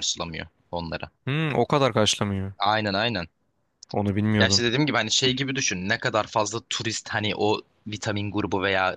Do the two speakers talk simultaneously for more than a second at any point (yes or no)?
no